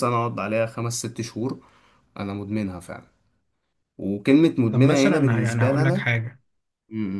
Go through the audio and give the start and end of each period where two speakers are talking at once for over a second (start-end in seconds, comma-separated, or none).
4.7-6.0